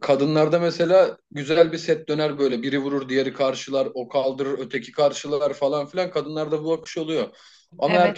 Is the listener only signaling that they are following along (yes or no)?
yes